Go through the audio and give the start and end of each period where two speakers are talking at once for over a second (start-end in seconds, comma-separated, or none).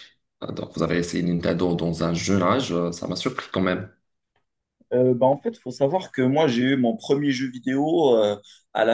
none